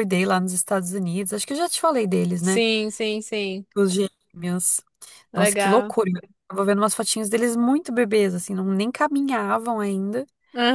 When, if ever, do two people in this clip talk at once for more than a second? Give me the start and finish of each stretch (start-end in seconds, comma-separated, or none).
none